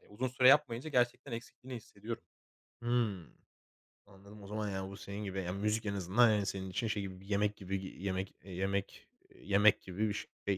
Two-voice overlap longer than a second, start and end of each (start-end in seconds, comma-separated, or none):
none